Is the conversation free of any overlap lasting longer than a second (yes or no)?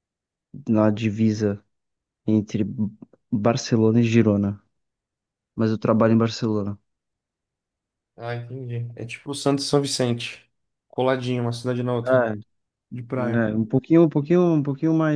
yes